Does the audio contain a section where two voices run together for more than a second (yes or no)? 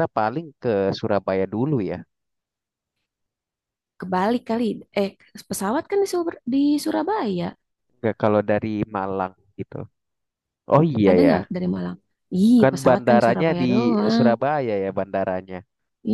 yes